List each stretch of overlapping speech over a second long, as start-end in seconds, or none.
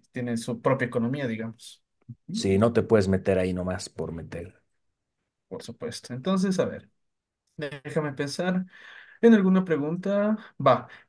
none